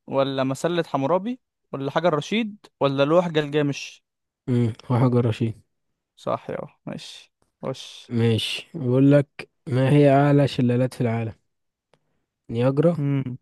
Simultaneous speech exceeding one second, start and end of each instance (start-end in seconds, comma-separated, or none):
none